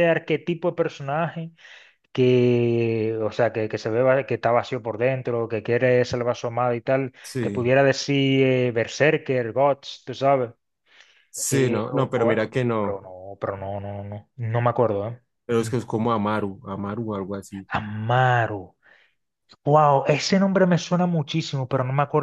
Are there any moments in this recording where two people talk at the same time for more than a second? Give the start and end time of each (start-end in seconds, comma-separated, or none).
11.5-13.0